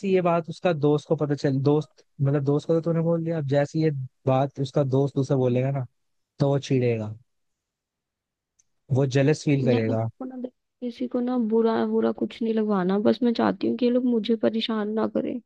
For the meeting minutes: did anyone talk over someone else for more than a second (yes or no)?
no